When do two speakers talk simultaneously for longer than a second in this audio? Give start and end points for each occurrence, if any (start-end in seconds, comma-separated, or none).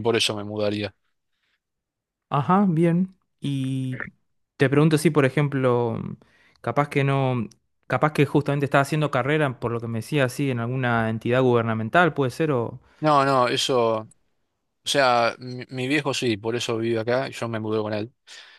none